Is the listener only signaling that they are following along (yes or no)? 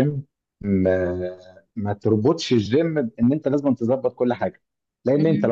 yes